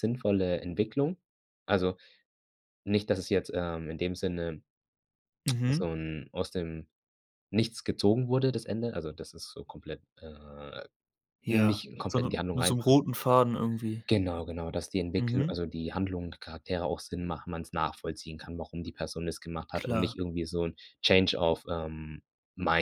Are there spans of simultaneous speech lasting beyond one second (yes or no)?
yes